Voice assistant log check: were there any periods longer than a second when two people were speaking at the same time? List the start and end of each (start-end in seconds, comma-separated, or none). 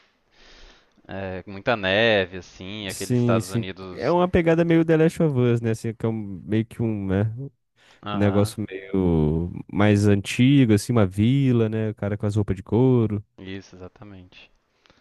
2.9-4.2